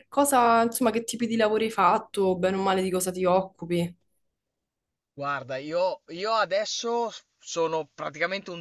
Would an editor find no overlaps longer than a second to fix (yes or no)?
yes